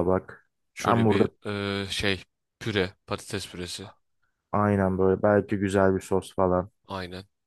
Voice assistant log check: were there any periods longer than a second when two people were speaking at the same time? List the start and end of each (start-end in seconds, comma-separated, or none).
none